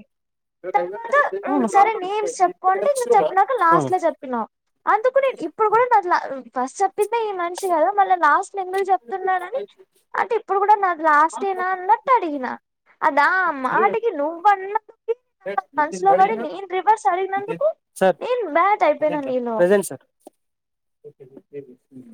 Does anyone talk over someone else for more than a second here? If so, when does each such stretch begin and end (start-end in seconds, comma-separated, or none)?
none